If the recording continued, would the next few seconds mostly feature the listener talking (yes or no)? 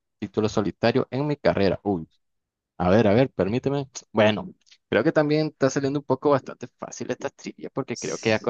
no